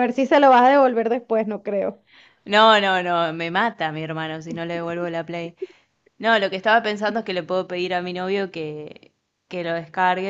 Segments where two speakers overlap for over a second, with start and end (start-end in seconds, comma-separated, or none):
none